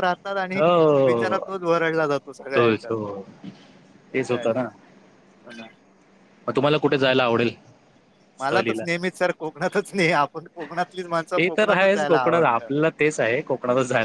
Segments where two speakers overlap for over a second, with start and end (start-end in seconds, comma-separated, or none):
11.4-12.7